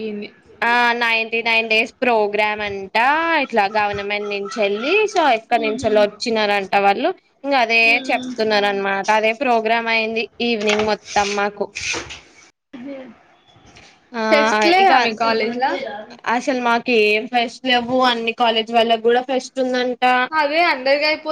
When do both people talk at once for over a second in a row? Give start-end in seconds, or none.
none